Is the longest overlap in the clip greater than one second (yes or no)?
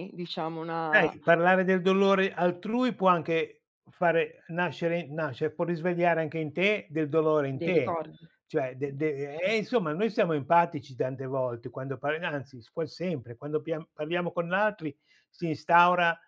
no